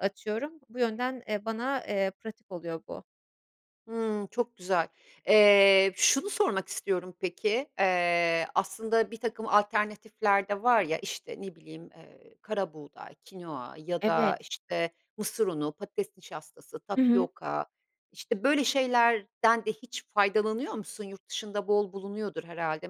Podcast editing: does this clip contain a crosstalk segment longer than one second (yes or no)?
no